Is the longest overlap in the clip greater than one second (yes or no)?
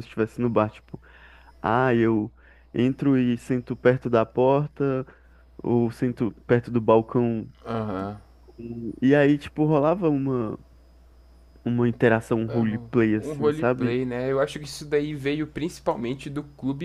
yes